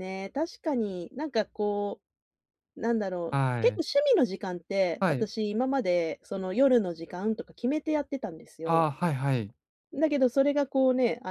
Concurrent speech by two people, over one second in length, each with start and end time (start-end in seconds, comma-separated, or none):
none